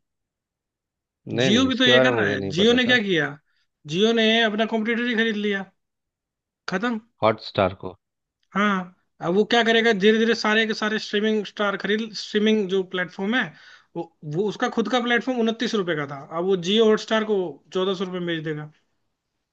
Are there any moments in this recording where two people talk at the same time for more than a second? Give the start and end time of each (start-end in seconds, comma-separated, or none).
1.3-3.0